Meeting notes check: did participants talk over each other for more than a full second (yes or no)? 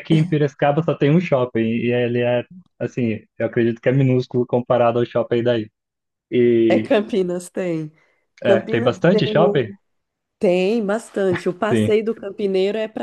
yes